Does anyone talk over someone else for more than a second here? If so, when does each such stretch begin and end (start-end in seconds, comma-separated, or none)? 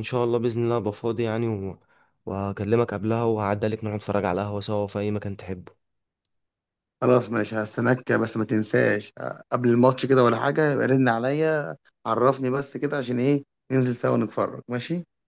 none